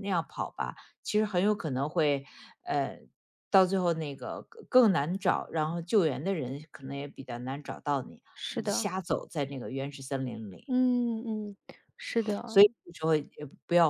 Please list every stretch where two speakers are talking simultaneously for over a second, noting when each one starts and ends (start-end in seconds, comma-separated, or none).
none